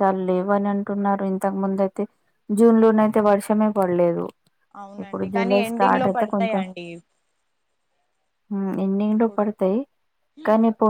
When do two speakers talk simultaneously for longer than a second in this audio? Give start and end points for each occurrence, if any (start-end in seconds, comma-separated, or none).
5.0-6.6